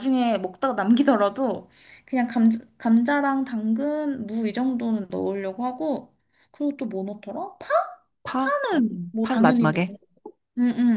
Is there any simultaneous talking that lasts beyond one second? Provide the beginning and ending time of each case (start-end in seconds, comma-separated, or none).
8.3-9.9